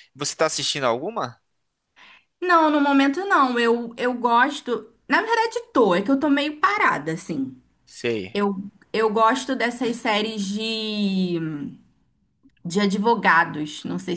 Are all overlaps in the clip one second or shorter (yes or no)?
yes